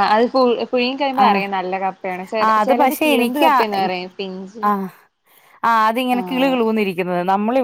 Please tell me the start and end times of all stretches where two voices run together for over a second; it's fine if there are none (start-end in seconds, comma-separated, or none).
2.5-4.6